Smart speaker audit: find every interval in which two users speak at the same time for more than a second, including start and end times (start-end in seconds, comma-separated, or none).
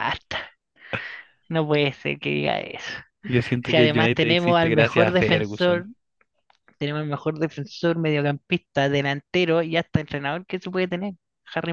3.6-5.9